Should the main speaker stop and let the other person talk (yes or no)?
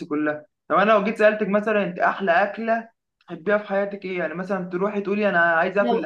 yes